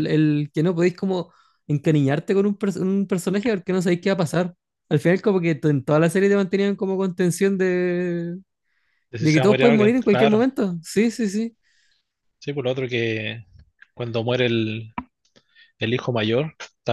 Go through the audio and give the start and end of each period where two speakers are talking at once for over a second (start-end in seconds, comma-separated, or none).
9.2-10.5